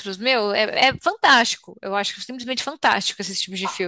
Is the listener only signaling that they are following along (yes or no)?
no